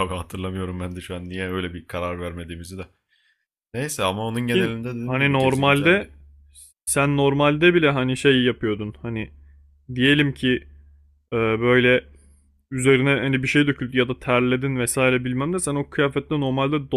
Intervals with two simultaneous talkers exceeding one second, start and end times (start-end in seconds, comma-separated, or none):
4.5-6.1